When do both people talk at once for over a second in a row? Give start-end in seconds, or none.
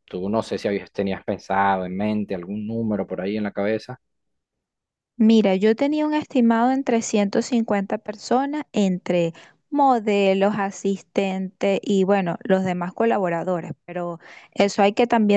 none